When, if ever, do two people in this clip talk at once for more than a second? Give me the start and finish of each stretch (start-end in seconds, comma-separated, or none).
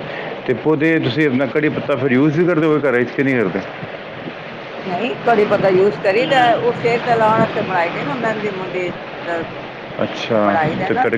none